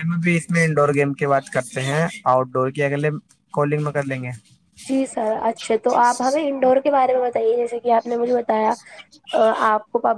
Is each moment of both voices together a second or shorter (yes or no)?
yes